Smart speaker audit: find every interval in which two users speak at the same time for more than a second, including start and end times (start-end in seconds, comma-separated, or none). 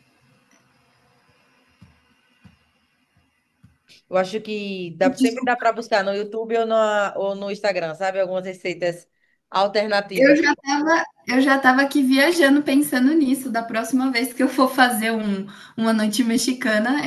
none